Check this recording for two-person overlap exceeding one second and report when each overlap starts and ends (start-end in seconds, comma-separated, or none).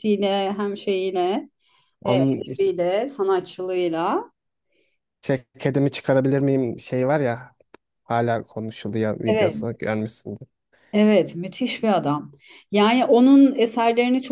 none